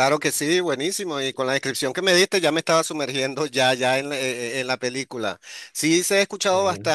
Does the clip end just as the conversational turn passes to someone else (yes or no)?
no